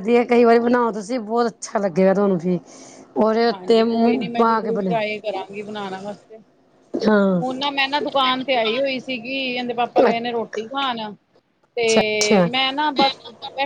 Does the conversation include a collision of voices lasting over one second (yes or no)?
yes